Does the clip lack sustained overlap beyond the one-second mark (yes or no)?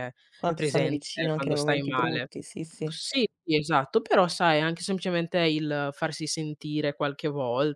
no